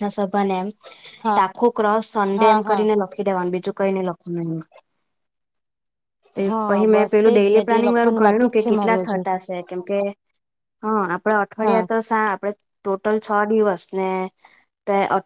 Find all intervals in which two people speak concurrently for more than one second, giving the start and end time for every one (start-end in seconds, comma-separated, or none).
6.5-9.2